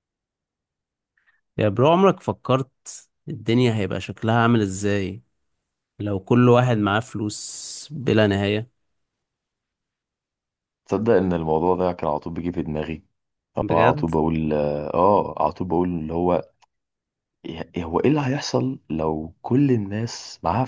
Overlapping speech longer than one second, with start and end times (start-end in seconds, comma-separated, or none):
none